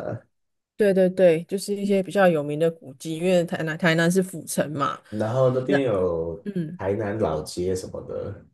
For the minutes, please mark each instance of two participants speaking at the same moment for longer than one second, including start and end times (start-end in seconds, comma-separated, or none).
none